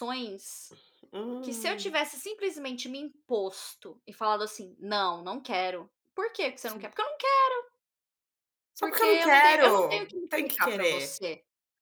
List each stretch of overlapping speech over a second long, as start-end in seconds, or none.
8.8-11.2